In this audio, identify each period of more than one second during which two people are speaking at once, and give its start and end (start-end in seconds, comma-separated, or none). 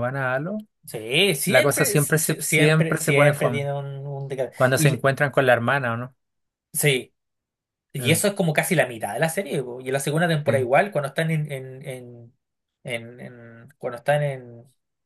1.4-3.7